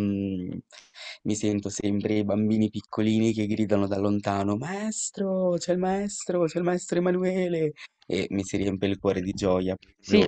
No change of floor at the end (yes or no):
no